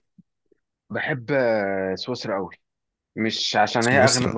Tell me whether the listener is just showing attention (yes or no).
yes